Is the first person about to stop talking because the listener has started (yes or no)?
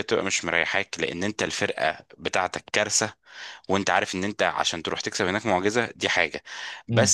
no